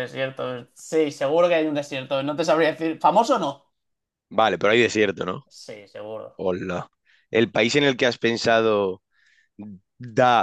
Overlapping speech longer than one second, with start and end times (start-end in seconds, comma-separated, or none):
none